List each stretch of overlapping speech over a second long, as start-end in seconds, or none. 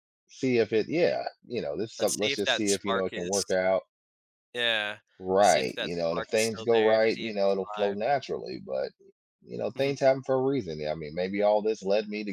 2.0-3.4, 5.4-8.0